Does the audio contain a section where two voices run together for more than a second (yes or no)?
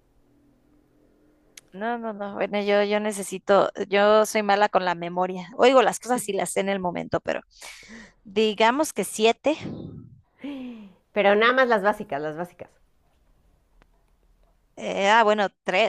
no